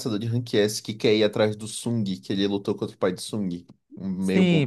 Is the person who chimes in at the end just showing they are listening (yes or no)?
no